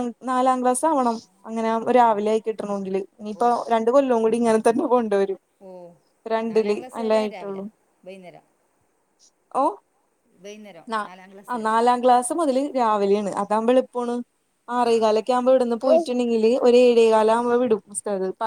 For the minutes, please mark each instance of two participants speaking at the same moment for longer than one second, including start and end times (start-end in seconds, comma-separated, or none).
none